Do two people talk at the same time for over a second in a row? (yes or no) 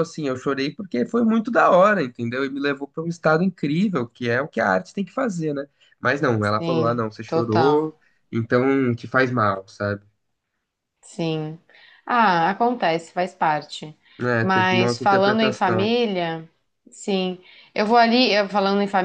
yes